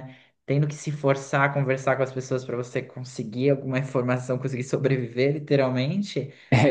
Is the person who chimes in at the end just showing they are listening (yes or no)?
no